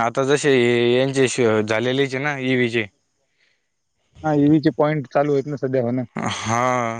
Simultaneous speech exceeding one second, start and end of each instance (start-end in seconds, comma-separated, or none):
none